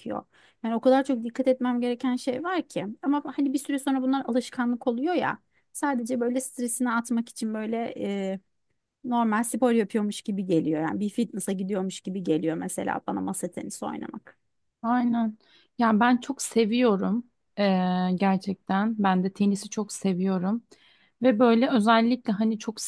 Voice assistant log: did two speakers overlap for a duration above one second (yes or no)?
no